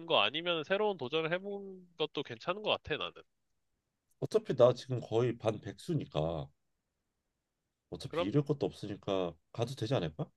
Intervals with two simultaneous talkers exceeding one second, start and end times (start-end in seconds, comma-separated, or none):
none